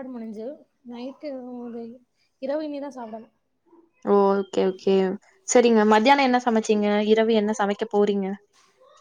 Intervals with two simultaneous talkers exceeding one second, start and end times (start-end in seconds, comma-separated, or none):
none